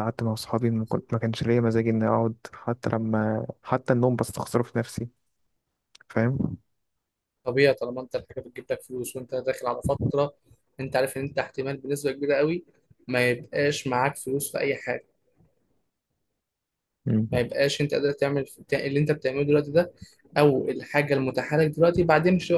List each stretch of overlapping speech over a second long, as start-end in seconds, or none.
none